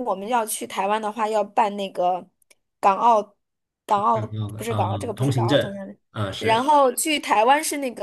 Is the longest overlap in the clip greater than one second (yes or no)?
yes